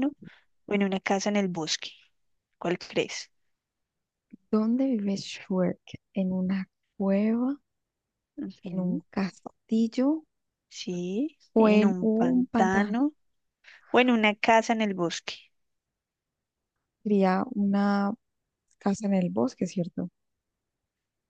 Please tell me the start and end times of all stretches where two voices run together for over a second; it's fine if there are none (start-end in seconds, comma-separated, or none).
11.5-13.0